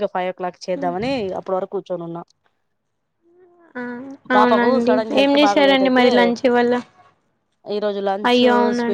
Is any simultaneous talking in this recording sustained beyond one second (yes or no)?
yes